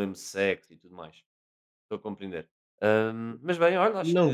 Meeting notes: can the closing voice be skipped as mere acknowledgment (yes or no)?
no